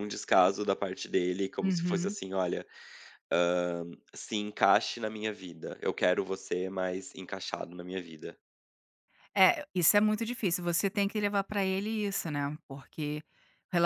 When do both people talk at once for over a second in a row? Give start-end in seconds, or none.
none